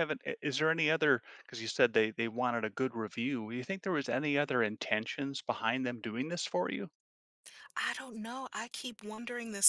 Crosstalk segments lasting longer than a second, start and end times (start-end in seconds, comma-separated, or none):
none